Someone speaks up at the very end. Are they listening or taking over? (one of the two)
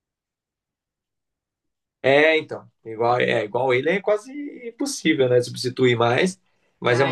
listening